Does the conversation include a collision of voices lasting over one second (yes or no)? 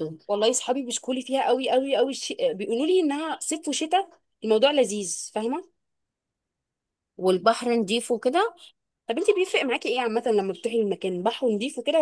no